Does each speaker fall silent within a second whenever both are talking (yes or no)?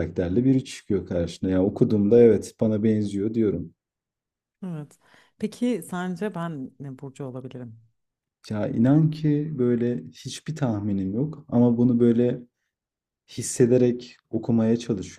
yes